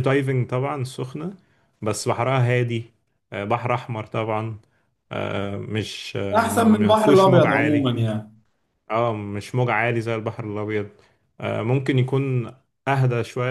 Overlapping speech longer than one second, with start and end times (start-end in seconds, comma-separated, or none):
6.4-7.9